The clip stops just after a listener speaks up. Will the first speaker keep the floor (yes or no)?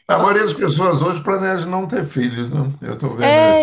no